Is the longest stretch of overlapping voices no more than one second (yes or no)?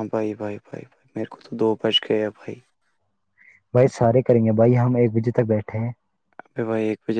yes